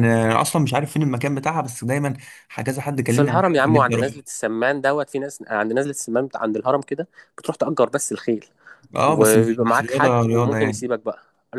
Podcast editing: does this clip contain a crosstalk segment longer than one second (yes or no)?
yes